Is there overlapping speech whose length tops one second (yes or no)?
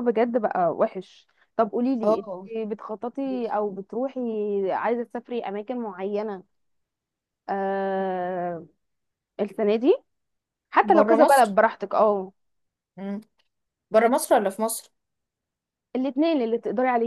no